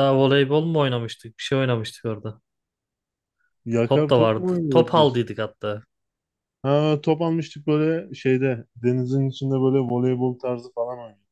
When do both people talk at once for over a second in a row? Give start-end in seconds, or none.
3.8-5.2